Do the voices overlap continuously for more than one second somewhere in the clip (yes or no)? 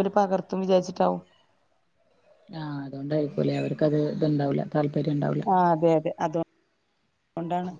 no